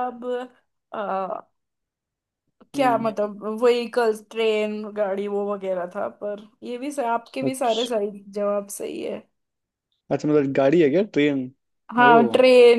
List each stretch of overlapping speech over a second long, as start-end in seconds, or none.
none